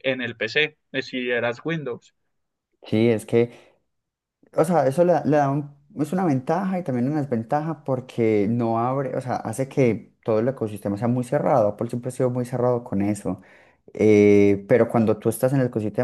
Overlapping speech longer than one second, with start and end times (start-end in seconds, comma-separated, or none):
none